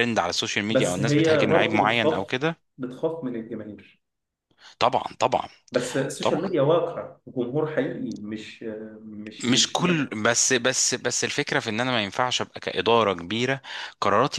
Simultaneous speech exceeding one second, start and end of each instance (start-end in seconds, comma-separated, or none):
0.7-2.3